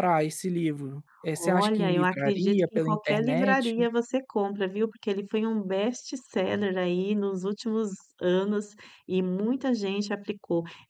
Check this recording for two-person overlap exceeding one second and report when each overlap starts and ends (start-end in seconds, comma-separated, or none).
1.4-3.7